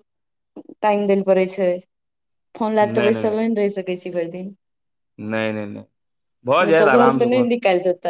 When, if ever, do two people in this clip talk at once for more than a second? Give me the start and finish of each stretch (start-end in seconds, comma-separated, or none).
none